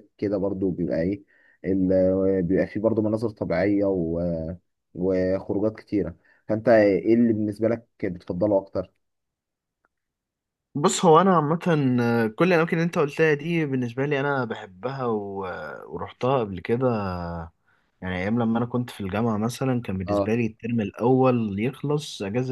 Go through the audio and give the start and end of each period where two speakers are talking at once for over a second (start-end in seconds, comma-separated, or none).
none